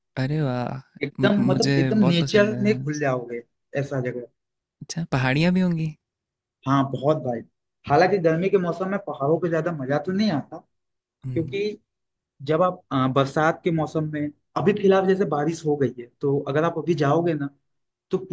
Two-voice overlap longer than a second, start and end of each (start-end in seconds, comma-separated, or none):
1.2-2.9